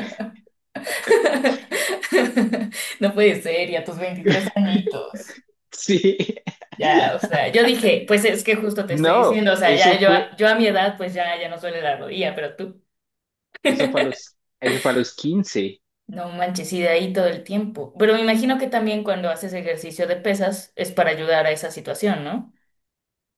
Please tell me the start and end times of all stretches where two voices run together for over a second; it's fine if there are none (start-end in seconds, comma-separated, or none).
8.9-10.4